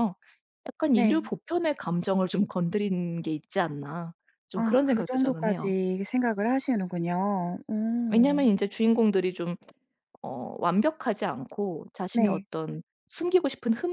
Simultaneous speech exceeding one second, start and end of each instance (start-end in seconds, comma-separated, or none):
4.5-5.7